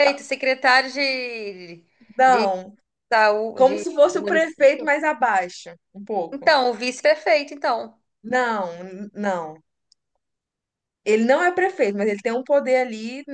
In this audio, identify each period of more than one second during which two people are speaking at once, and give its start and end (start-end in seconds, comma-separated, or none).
3.5-4.9